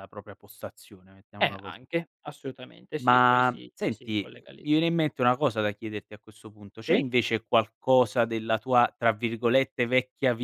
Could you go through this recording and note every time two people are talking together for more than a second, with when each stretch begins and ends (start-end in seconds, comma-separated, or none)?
3.0-4.7